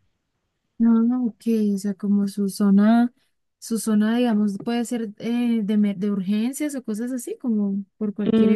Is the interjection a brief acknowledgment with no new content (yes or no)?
no